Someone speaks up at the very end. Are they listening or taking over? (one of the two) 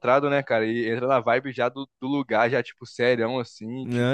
taking over